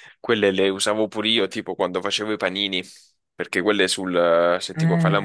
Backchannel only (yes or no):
yes